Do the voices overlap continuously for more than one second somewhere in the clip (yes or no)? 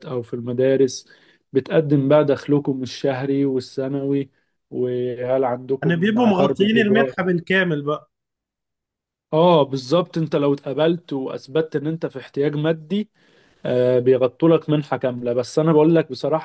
yes